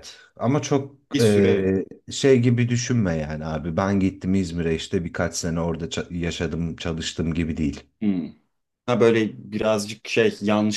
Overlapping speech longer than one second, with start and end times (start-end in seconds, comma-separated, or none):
none